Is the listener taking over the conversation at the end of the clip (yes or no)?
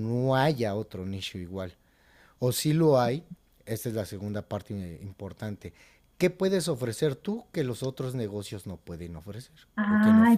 yes